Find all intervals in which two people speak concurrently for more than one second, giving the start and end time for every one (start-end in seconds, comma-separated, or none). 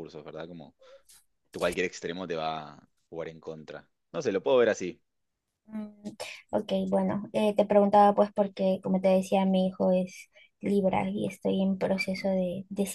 none